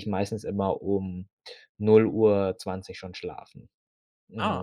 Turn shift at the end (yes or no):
no